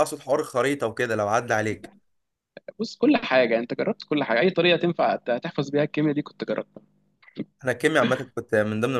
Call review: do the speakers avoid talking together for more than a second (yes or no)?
yes